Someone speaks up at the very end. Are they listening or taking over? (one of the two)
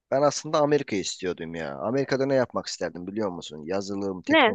listening